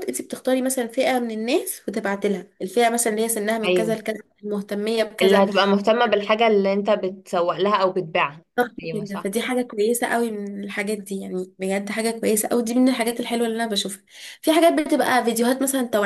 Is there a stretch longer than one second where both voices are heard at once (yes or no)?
no